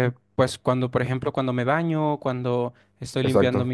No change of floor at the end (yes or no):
yes